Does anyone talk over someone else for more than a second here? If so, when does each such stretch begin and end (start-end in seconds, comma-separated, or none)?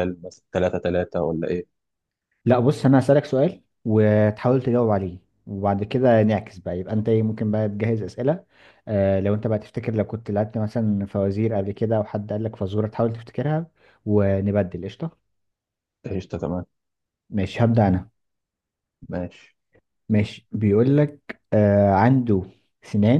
none